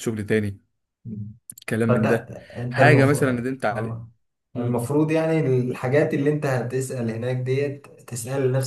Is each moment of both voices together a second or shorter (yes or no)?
no